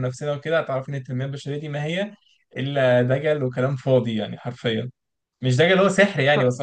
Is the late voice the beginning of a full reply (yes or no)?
no